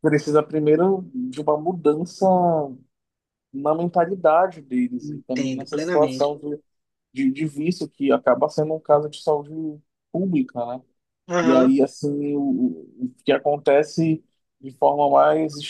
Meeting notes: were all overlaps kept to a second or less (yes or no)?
no